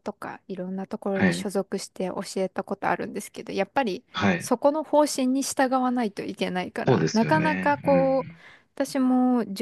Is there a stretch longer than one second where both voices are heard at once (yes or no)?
yes